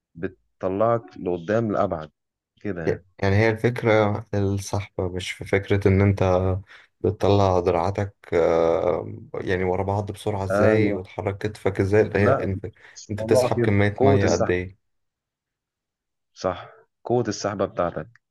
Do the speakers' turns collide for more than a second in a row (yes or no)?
yes